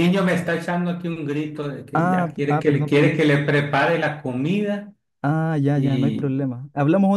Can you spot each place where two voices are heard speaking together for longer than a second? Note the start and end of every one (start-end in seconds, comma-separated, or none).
1.9-3.3